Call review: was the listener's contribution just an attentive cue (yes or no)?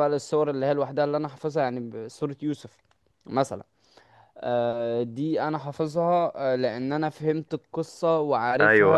no